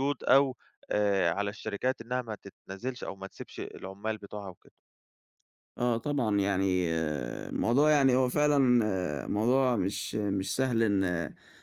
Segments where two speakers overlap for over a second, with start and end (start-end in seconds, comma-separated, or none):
none